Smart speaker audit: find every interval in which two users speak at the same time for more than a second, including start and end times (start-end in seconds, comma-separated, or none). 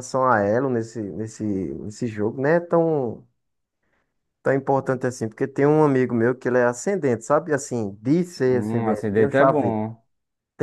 8.4-9.8